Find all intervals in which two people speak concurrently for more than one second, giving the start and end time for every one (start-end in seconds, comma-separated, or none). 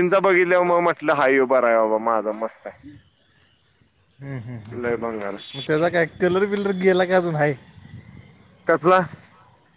none